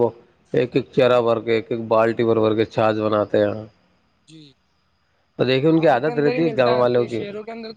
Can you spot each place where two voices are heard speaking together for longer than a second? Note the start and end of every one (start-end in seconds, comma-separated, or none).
5.8-7.2